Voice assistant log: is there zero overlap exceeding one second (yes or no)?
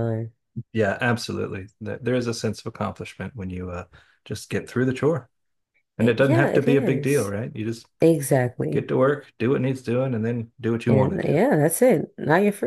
no